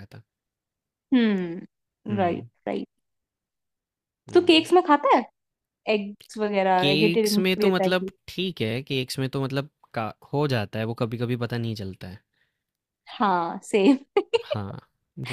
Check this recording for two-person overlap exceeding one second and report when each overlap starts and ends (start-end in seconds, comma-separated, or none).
6.8-8.1